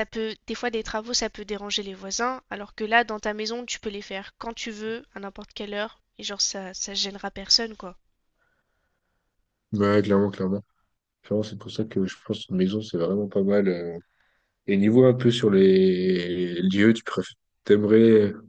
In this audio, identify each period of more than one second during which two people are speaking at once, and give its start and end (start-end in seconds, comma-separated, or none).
none